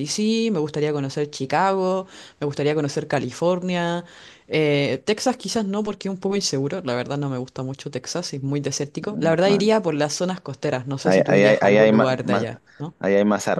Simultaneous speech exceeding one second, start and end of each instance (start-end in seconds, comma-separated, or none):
11.0-12.4